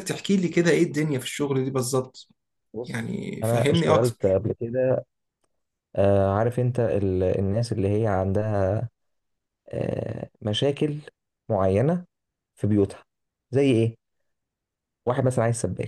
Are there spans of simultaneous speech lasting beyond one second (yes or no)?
yes